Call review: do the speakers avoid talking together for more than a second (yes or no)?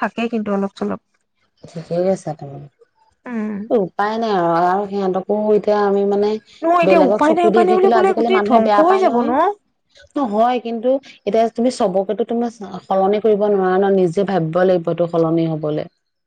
no